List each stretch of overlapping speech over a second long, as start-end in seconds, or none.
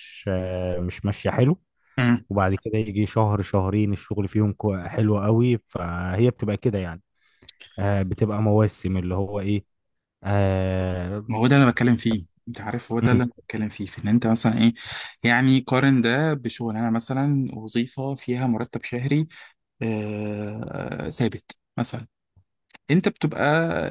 none